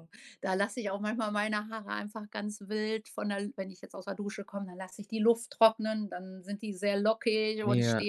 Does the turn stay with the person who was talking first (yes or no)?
yes